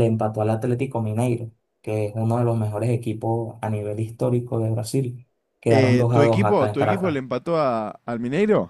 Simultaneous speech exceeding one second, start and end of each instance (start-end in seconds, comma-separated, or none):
5.7-7.2